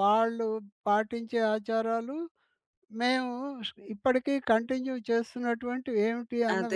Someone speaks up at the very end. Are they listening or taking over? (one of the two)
taking over